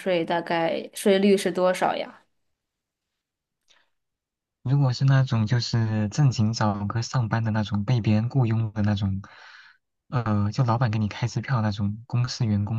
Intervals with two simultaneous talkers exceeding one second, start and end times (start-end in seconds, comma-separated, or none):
none